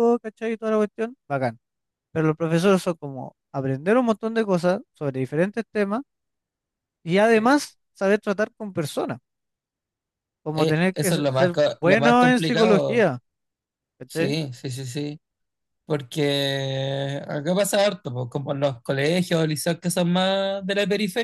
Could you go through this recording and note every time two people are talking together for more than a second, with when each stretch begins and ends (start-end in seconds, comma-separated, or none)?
10.5-13.1